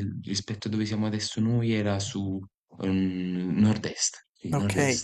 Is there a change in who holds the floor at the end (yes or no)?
yes